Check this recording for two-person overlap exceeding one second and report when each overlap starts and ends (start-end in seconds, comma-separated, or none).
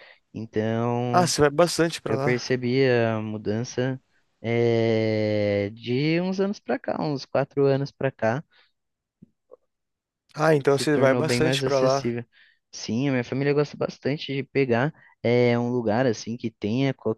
10.7-12.1